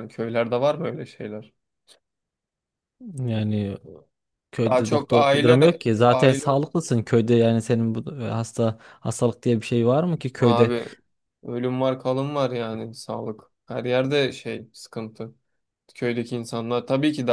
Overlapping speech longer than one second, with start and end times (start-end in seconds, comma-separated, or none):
4.7-6.5